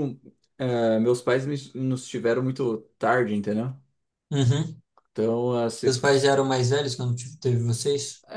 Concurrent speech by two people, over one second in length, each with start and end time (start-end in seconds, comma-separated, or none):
none